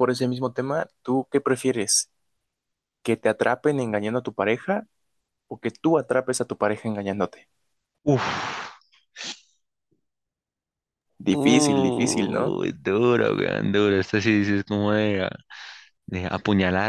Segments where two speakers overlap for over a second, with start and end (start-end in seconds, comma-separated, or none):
11.3-12.5